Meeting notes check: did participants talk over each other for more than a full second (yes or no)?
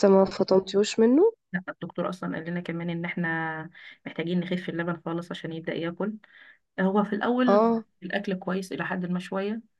no